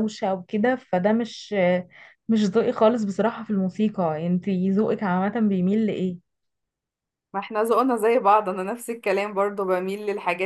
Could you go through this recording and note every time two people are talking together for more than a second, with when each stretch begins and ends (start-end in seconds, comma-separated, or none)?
none